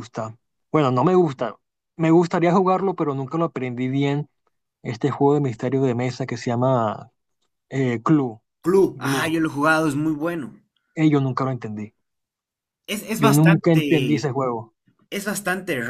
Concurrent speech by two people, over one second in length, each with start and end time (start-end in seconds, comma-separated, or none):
13.1-14.4